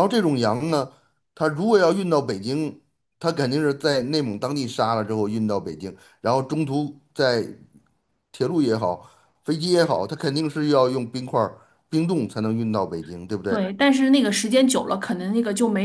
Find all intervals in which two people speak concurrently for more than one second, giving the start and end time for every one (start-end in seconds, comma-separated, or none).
none